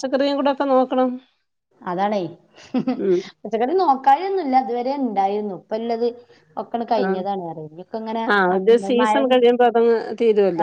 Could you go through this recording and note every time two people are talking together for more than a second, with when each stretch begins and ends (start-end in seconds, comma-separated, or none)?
none